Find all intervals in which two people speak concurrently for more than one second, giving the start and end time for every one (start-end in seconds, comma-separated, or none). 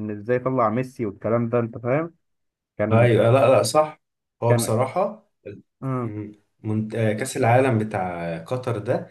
none